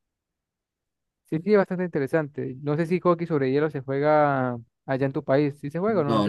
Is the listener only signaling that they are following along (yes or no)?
no